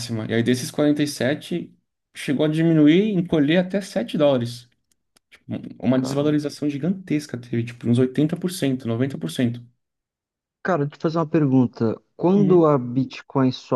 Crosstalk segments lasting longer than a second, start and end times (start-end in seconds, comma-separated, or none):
none